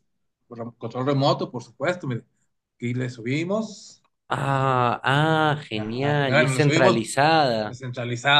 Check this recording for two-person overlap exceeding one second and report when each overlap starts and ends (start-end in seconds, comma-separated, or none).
5.7-7.0